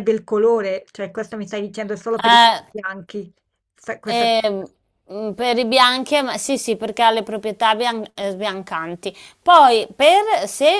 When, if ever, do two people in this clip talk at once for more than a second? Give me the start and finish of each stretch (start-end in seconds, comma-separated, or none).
none